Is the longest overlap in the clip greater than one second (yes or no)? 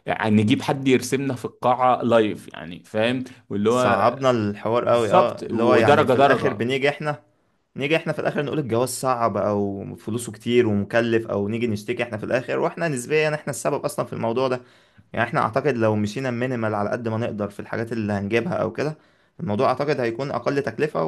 yes